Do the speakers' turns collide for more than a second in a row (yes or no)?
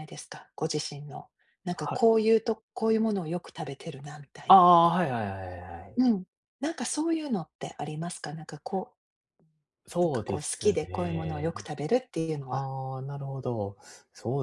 yes